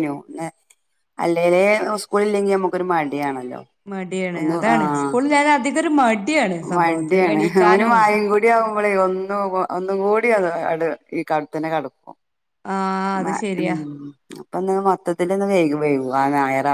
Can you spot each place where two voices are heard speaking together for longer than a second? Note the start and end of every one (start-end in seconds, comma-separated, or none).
none